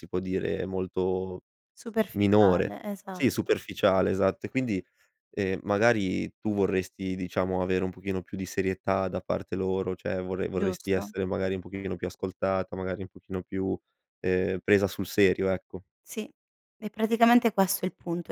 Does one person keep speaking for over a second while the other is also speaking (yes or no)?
yes